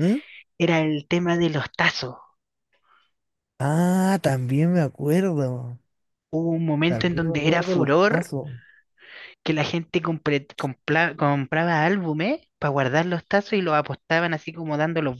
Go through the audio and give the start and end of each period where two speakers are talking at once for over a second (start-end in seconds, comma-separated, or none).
6.8-8.3